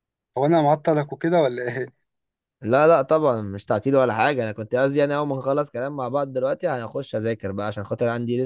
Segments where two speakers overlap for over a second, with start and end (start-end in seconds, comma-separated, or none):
none